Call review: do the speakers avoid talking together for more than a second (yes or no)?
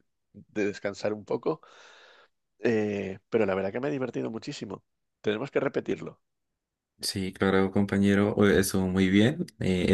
yes